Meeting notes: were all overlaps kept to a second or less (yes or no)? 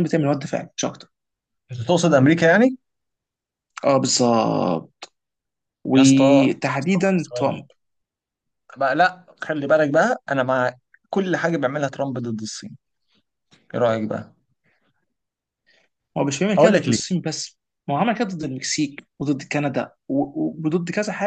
no